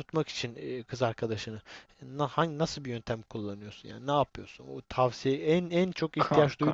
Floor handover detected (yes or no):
no